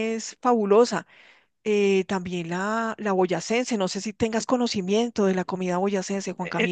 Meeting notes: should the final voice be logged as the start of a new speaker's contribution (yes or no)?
yes